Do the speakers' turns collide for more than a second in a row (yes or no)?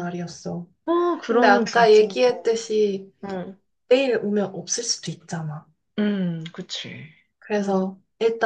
yes